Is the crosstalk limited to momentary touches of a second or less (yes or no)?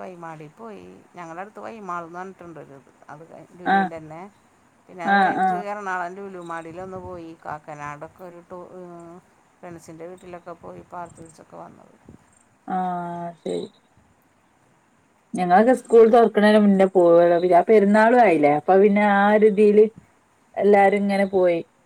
yes